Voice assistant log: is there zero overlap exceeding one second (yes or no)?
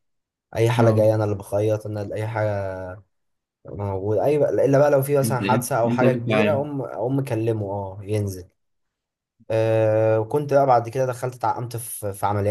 no